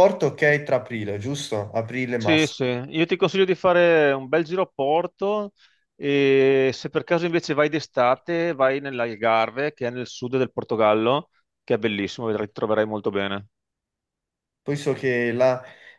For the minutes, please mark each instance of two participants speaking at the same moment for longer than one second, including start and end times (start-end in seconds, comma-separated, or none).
none